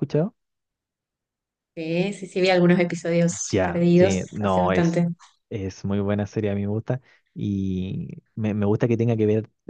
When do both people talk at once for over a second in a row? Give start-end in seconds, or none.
3.5-5.0